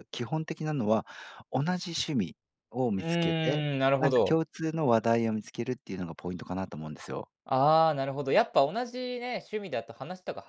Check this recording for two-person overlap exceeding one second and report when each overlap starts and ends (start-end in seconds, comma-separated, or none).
3.0-4.4